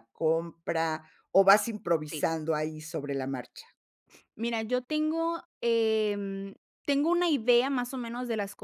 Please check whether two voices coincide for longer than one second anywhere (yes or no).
no